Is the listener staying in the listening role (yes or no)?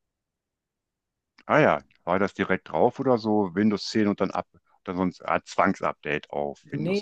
no